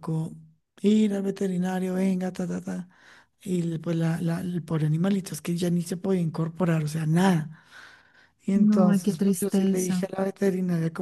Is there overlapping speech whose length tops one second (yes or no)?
yes